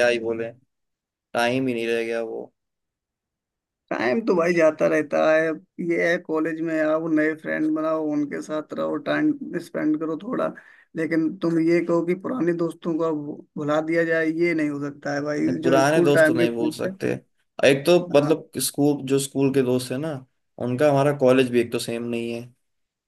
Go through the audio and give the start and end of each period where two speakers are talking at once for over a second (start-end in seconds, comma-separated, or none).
15.5-16.9